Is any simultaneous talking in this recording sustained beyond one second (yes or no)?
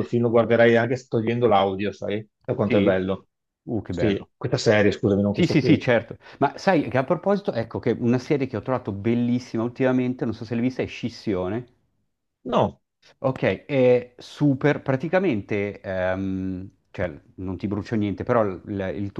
no